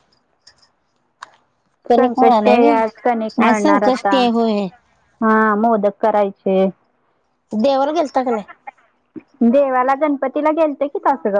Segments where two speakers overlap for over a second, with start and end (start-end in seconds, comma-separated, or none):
2.0-4.2